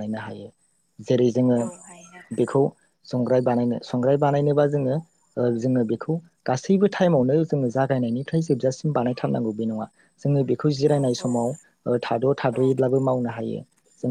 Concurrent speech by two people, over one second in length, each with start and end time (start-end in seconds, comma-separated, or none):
none